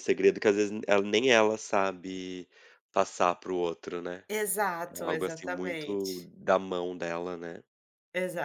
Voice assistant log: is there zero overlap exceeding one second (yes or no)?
no